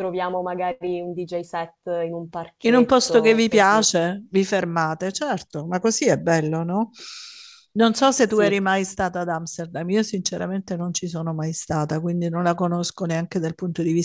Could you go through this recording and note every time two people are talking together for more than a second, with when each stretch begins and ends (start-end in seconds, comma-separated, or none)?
2.6-3.9